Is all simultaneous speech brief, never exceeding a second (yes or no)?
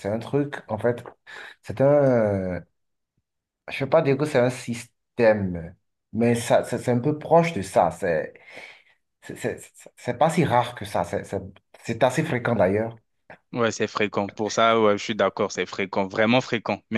yes